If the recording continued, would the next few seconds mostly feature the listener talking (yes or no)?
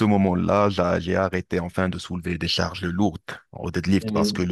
no